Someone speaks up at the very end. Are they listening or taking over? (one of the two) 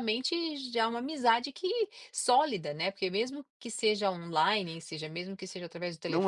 taking over